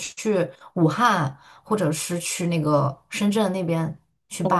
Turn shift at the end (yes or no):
yes